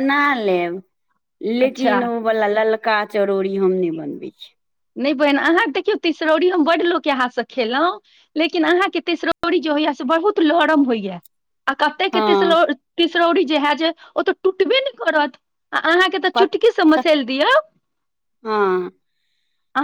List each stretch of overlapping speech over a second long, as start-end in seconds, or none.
none